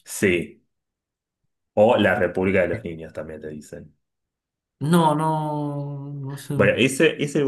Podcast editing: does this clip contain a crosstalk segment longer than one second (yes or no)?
no